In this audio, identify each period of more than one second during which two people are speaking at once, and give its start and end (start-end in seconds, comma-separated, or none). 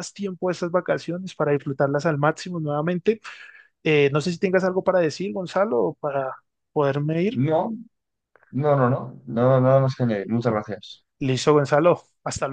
none